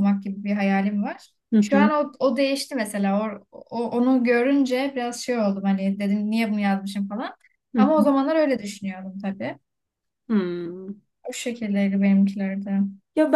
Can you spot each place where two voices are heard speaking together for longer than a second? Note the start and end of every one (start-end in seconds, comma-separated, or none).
none